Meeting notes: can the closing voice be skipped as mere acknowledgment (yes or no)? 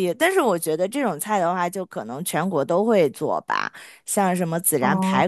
yes